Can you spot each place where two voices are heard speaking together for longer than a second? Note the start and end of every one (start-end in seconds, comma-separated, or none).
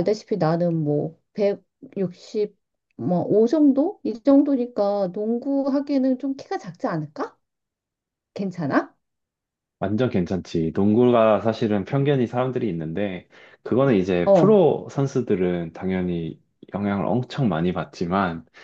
none